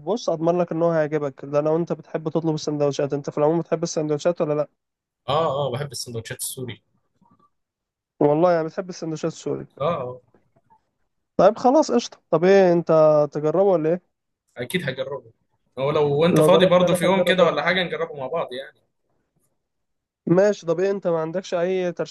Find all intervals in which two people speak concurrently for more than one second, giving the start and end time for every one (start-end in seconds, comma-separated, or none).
16.3-17.5